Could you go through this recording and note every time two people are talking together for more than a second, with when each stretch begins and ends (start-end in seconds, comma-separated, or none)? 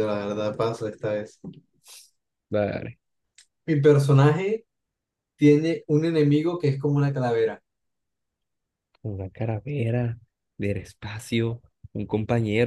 none